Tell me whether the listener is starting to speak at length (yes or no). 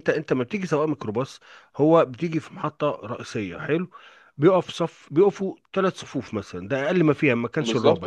no